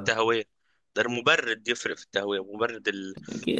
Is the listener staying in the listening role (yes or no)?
no